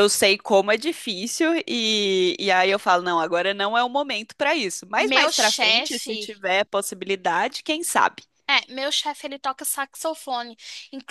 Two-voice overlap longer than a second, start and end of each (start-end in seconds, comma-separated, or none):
5.0-6.4